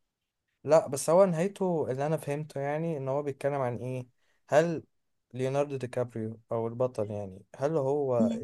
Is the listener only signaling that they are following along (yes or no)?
yes